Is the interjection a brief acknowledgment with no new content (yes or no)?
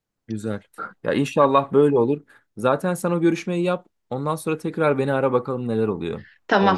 no